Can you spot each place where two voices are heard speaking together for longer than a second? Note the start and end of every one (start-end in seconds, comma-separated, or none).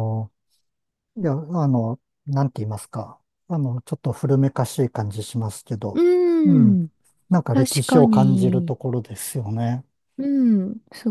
7.5-8.8